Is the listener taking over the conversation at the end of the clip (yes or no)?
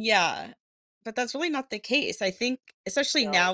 no